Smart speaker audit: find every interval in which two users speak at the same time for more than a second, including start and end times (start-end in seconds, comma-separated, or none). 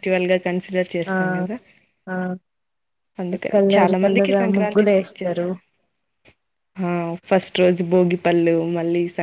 3.5-5.5